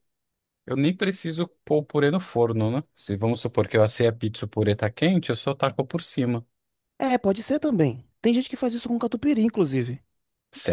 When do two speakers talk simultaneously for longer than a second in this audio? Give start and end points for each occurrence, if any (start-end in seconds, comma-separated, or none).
none